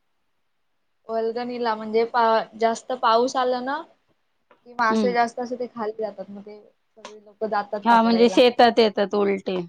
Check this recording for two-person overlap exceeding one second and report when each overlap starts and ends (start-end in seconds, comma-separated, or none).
none